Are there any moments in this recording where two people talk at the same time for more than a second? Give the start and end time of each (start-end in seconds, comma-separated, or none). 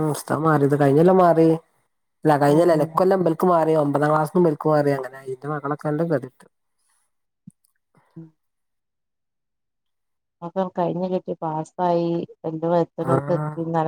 none